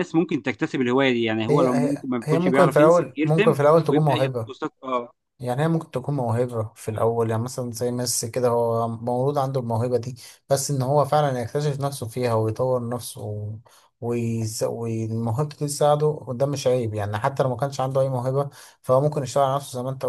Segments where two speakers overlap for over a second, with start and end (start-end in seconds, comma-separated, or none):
1.5-4.5